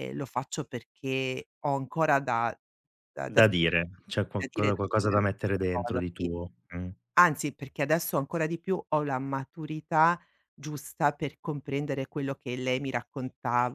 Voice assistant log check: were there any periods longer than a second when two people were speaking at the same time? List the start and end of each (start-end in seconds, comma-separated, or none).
3.3-6.3